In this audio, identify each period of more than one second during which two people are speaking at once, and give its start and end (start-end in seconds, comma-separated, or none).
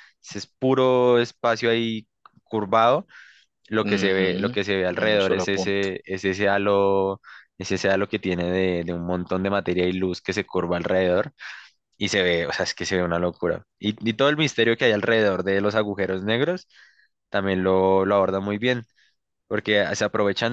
3.8-6.0